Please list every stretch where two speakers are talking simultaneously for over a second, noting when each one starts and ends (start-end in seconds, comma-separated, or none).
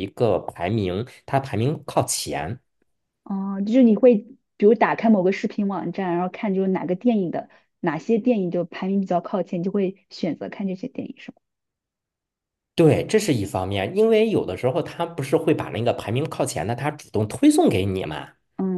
none